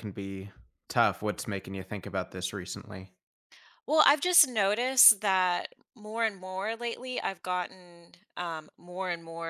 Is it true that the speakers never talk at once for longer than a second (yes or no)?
yes